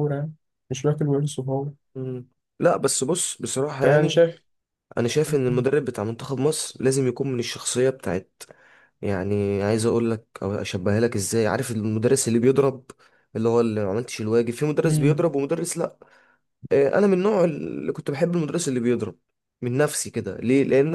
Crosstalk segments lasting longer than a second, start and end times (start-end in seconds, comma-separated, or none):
none